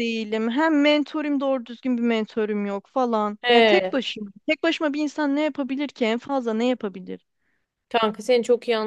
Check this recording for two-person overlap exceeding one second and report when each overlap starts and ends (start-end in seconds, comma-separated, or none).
none